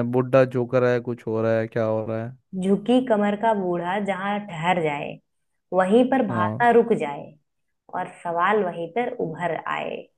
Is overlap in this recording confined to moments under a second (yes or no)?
yes